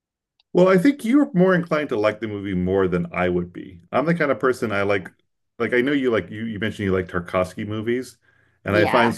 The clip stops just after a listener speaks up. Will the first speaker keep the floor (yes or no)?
yes